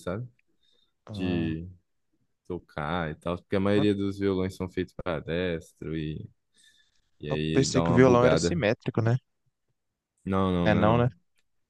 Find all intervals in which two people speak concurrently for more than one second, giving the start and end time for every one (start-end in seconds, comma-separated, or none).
7.3-8.6